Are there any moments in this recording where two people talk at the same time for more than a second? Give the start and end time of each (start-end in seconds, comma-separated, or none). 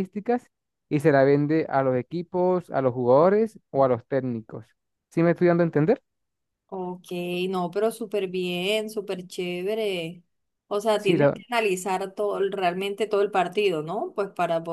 none